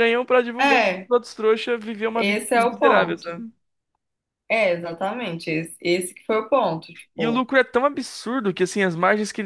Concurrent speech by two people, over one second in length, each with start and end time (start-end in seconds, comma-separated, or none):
2.1-3.4